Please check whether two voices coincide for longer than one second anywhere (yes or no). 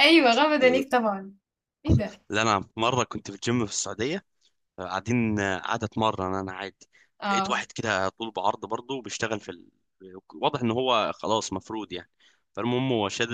no